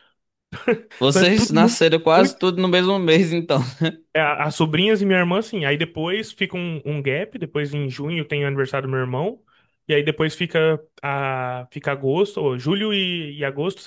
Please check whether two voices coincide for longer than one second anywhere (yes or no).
yes